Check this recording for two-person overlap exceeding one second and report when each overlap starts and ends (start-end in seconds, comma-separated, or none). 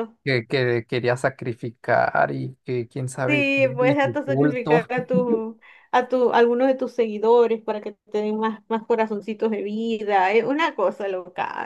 3.2-4.8